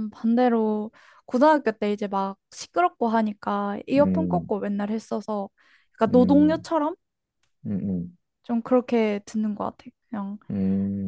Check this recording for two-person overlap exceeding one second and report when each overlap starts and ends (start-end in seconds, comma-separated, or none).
none